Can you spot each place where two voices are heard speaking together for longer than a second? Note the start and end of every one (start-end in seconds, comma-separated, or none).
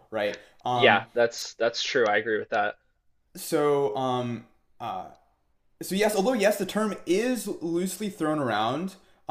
none